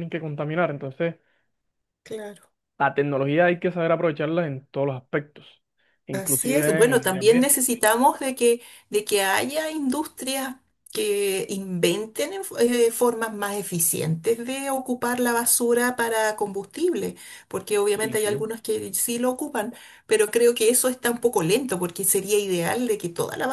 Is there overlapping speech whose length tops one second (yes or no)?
yes